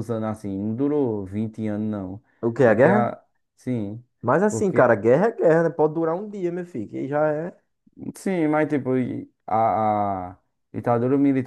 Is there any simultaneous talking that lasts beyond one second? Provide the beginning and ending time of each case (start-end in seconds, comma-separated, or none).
none